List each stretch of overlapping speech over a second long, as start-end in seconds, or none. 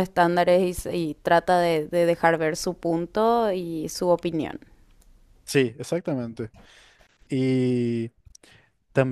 none